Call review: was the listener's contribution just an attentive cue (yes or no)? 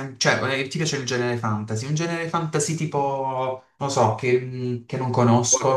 no